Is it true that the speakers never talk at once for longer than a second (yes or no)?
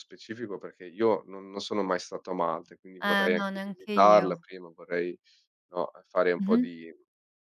no